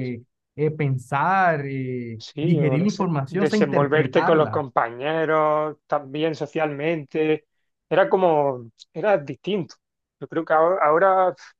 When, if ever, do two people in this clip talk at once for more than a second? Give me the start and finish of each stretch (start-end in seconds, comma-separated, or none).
2.2-4.6